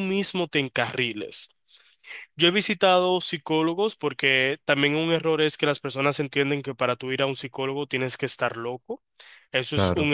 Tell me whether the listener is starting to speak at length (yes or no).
no